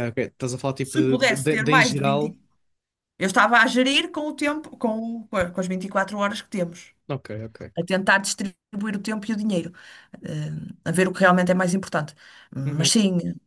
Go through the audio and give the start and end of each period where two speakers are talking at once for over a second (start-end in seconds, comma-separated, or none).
0.8-2.4